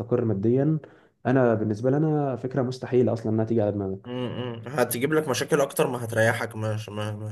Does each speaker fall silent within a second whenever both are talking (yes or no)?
yes